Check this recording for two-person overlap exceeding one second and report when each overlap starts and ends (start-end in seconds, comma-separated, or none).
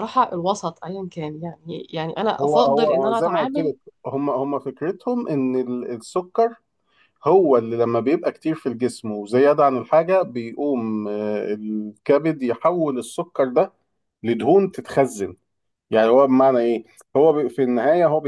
2.4-3.7